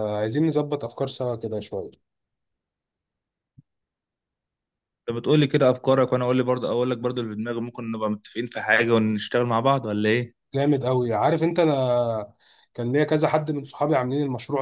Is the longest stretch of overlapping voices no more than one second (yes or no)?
yes